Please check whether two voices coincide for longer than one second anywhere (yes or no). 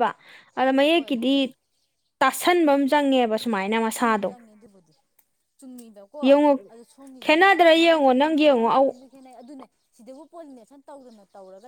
yes